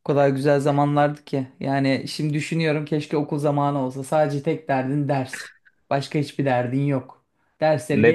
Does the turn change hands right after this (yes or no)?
yes